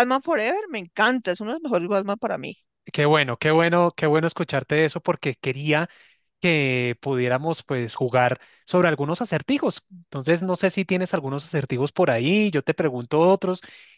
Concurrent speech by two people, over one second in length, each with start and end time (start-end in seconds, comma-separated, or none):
none